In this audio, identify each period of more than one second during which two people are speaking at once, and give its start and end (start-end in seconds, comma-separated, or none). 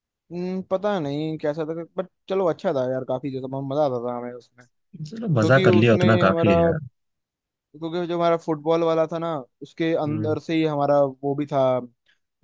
5.2-6.5